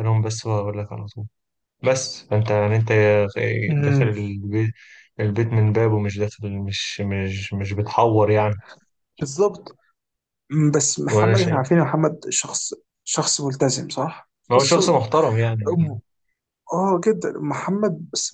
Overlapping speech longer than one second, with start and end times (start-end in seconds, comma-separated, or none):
none